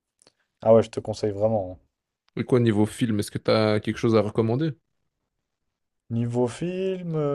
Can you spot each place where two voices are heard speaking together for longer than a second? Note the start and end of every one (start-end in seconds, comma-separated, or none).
none